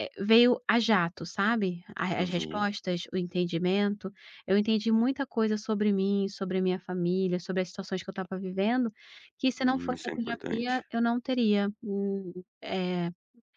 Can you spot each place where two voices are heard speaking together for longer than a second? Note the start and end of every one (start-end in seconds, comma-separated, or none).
9.6-10.8